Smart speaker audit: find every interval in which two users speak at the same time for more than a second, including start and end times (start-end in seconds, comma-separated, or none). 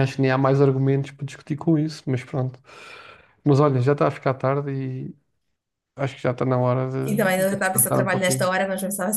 7.0-8.5